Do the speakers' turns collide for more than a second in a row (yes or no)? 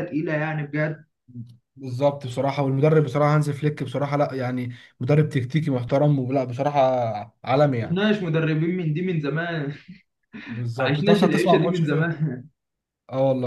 yes